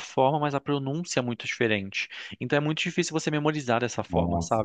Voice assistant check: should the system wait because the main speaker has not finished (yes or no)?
yes